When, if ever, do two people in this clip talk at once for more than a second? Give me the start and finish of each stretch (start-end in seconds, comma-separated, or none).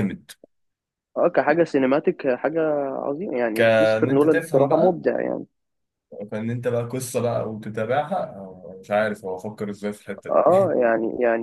3.5-5.0